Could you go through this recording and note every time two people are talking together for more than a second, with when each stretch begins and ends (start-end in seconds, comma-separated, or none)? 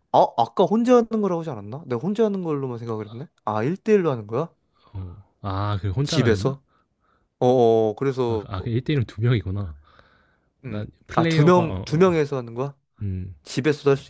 10.7-12.1